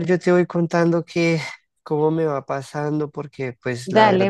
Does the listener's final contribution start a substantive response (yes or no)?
yes